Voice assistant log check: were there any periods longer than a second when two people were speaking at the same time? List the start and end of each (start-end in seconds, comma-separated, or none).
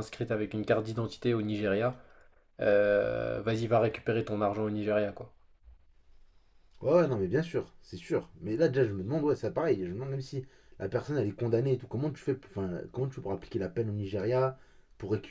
none